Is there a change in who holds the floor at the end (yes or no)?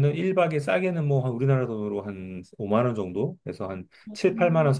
no